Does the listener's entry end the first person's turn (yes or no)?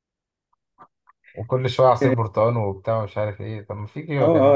yes